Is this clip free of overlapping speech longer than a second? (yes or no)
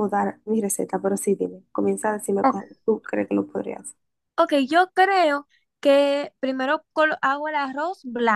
yes